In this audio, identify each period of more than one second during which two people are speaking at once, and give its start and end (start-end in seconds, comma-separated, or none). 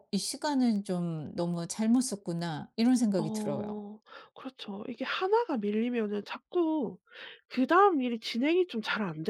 none